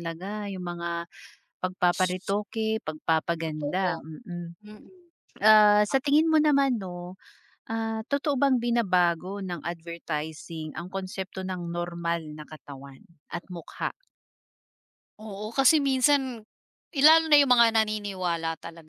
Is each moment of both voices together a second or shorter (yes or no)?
yes